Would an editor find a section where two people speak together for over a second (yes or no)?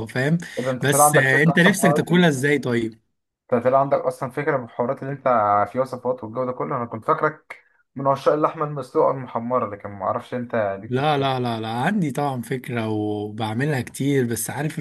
yes